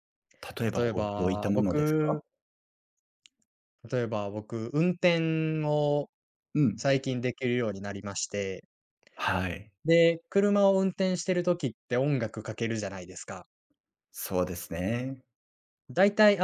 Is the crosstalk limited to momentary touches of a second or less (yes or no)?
no